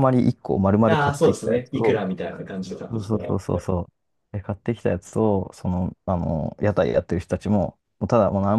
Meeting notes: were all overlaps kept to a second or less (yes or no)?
no